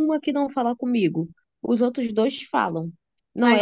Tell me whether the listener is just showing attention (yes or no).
yes